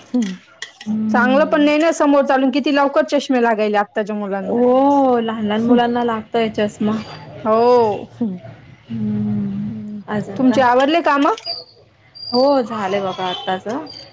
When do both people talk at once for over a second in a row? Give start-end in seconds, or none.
none